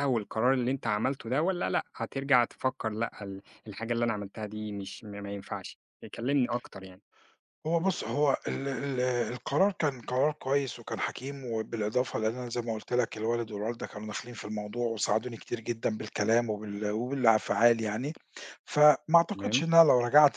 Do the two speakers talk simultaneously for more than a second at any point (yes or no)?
no